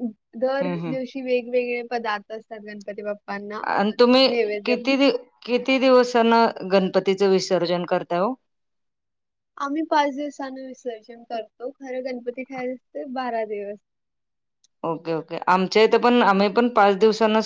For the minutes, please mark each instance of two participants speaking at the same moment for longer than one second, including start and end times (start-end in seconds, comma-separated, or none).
none